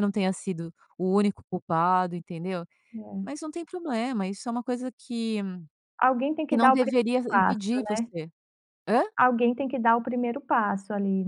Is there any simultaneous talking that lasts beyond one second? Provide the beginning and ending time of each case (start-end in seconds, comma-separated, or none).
6.5-8.1